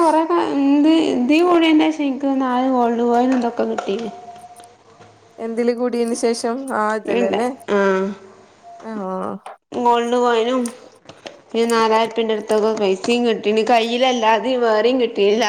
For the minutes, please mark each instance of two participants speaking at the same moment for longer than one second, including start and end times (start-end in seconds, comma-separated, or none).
none